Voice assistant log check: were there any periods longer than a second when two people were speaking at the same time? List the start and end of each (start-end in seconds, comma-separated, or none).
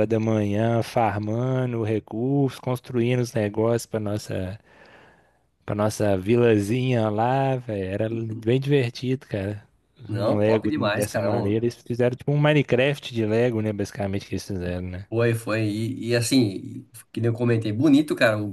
10.1-11.6